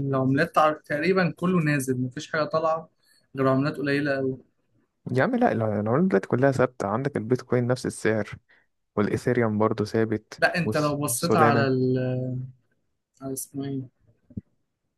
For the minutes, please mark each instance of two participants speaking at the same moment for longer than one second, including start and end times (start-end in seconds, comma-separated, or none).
10.4-11.7